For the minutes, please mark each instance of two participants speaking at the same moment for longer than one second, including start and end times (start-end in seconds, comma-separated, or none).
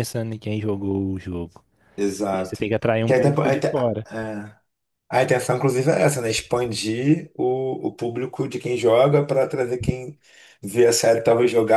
2.2-3.7